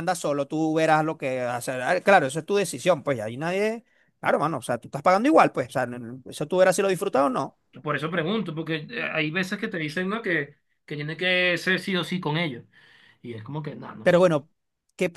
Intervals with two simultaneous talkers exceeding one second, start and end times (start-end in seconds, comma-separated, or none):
none